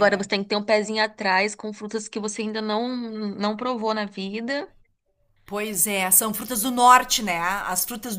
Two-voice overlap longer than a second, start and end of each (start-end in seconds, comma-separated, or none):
none